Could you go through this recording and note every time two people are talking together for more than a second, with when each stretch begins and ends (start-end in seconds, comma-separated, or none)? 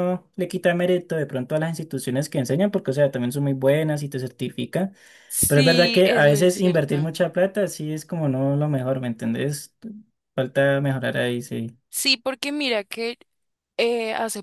5.5-7.1